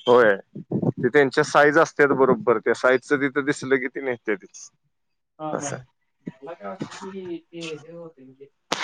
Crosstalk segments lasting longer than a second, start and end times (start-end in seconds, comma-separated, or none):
none